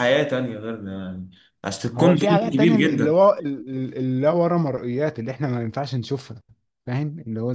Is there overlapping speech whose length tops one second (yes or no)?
yes